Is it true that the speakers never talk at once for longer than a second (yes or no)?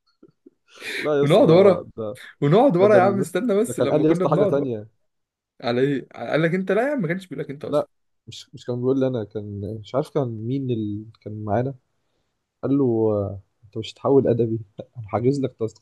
no